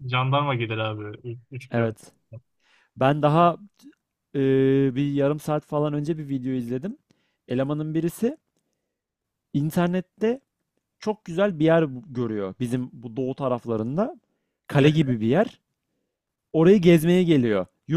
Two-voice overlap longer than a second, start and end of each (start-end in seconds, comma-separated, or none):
none